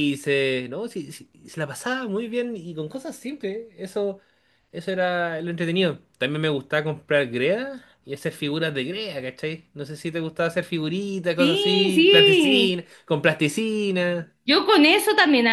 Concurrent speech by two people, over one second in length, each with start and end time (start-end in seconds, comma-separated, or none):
11.4-12.8